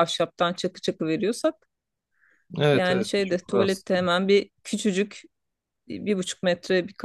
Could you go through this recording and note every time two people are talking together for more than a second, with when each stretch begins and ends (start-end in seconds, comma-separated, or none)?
2.7-4.1